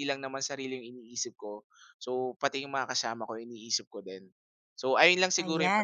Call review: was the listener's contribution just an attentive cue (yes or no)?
no